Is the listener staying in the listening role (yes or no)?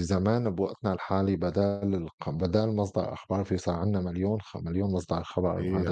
yes